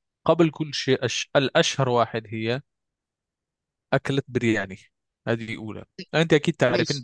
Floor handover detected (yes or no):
no